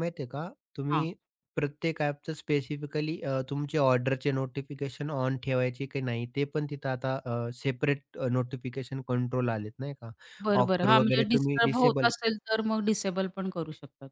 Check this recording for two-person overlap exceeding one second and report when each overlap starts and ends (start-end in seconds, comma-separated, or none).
10.6-12.1